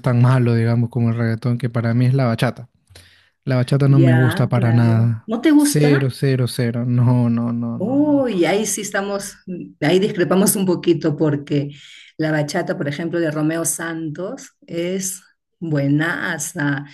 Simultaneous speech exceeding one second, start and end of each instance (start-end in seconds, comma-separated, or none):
3.9-6.1